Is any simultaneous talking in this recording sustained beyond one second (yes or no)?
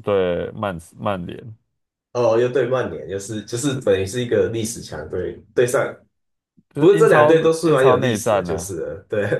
yes